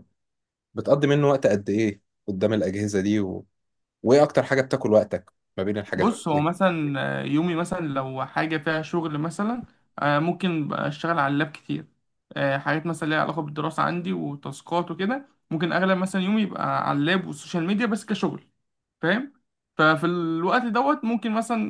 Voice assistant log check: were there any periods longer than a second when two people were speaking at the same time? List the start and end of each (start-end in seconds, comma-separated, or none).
none